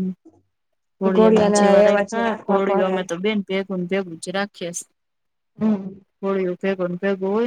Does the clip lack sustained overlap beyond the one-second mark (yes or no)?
no